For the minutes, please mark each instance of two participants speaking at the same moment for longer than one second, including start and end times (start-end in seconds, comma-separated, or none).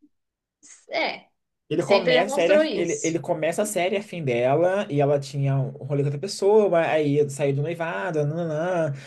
1.8-3.2